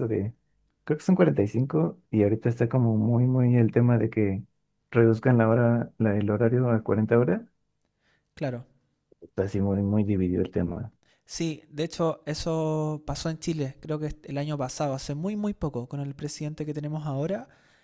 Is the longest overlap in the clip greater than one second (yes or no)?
no